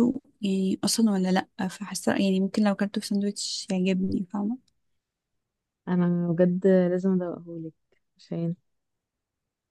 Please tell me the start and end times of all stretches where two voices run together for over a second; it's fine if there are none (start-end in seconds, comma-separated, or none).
none